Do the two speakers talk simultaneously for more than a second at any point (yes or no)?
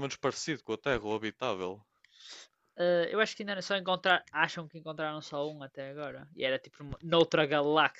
no